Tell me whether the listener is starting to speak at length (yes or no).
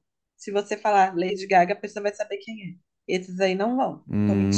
yes